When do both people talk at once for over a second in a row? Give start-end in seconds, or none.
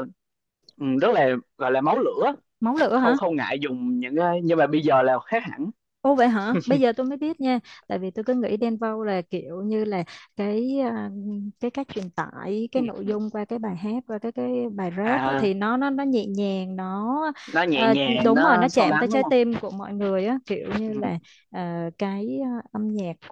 17.7-19.3